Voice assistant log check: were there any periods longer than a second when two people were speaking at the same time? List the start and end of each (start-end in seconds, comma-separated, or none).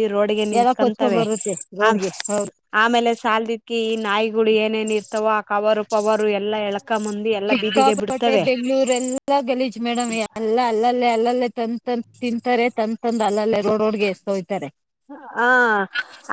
none